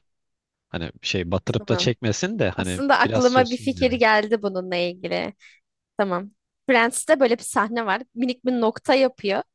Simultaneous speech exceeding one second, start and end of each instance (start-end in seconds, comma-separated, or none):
2.5-4.0